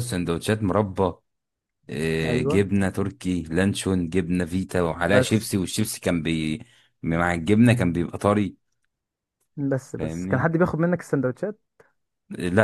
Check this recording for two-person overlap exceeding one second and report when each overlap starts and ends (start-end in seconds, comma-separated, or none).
none